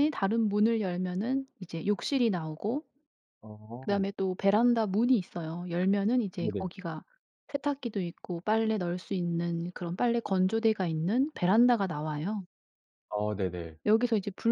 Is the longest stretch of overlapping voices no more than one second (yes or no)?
yes